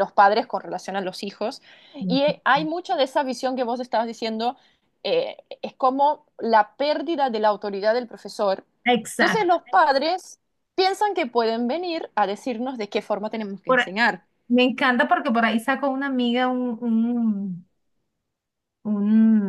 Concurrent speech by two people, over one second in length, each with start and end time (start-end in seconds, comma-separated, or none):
none